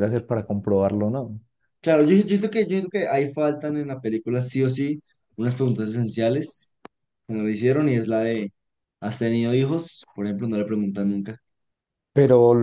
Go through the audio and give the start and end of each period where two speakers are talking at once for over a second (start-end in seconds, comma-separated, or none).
none